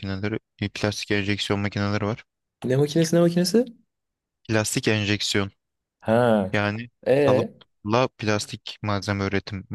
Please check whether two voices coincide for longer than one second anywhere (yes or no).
no